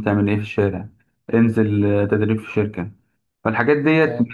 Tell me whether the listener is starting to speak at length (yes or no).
no